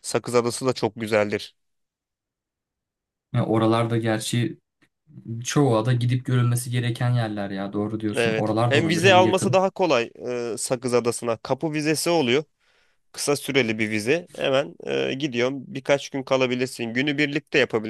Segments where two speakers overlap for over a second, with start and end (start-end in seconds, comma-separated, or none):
8.2-9.6